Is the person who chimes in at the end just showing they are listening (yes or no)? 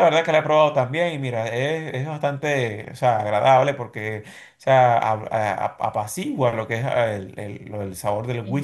yes